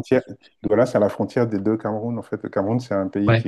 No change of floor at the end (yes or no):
yes